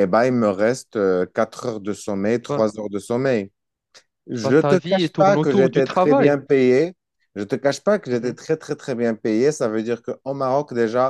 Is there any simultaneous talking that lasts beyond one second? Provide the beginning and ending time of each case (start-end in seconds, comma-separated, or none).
4.4-6.3